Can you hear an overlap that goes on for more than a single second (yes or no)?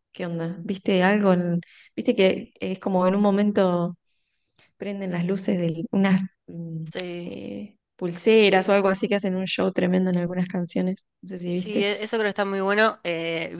no